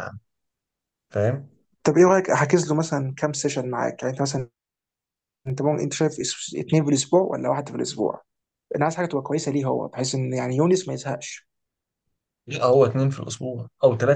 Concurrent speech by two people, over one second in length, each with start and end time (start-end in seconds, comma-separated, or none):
none